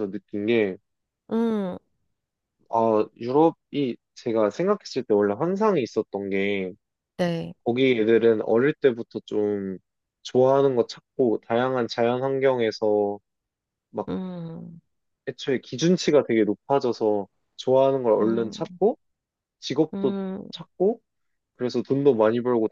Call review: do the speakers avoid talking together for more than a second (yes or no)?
yes